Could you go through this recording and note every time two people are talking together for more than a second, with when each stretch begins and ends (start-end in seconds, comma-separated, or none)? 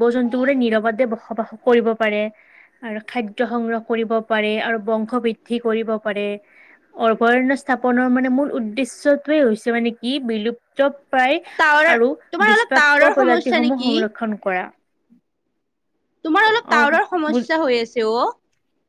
12.5-13.9